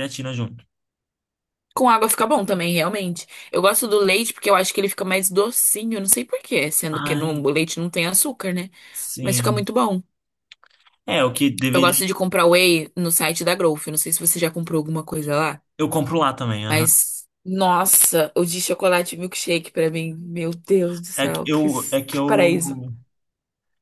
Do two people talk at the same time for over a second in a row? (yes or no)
yes